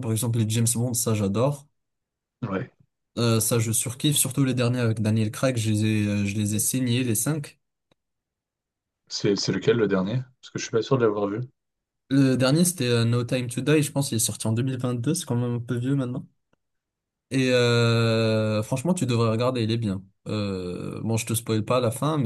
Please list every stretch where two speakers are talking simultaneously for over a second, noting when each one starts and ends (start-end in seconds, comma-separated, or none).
none